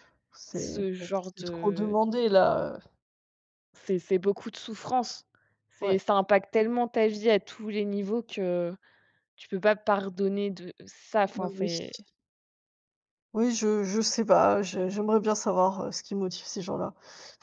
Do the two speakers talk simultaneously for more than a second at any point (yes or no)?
yes